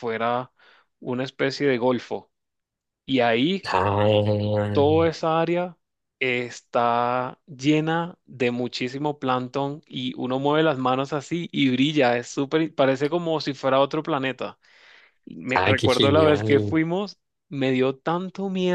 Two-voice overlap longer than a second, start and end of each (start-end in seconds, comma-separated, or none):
15.6-16.8